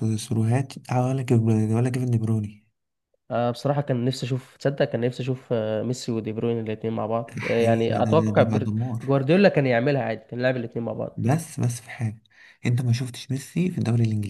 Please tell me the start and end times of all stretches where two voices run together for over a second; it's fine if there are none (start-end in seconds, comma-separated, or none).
7.4-9.0